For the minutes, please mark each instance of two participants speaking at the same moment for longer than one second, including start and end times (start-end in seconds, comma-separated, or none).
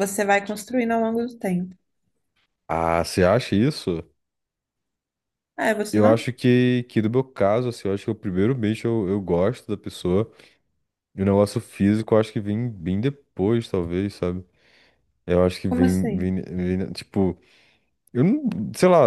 none